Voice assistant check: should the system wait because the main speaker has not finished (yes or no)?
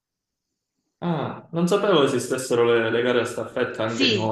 no